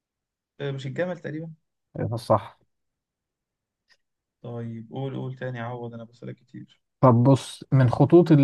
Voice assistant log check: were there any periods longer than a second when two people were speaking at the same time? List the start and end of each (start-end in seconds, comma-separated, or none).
none